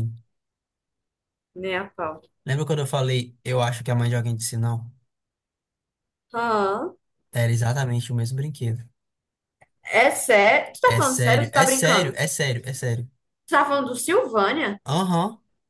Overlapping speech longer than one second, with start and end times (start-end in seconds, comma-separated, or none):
10.8-12.2